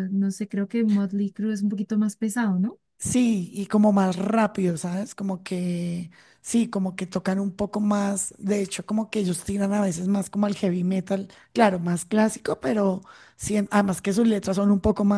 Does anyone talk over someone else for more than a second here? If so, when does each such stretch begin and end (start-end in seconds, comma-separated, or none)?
none